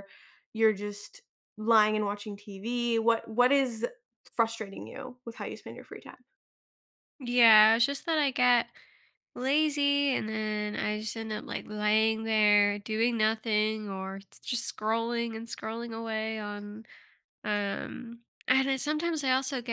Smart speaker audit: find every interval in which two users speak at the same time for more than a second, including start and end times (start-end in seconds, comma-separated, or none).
none